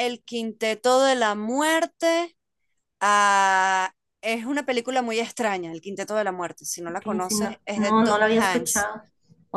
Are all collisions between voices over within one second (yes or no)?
no